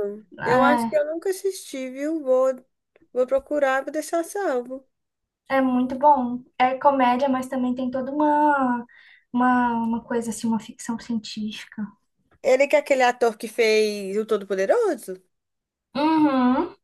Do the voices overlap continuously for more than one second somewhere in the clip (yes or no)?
no